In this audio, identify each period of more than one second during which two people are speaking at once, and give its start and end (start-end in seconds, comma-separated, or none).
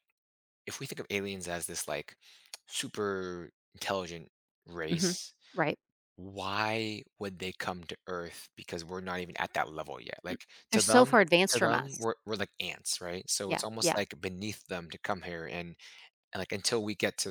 10.3-12.1